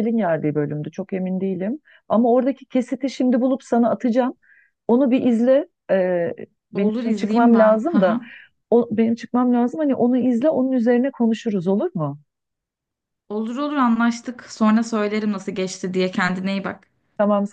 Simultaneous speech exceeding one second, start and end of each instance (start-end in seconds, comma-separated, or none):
6.7-8.2